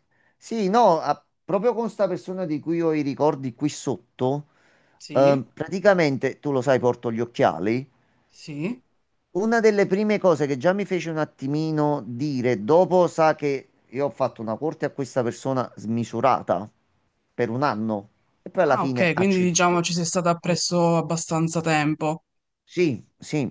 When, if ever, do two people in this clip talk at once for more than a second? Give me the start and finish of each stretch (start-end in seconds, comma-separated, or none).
18.6-19.9